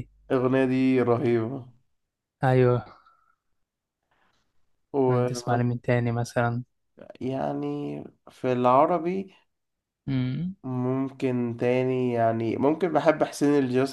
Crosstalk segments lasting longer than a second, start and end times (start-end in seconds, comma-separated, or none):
none